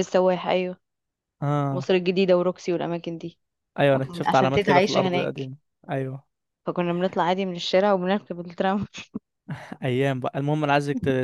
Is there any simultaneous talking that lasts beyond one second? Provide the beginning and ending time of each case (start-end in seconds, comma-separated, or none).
3.9-5.4